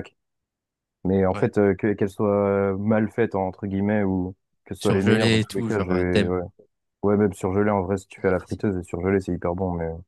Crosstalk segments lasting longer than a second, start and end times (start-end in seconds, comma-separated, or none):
4.8-6.3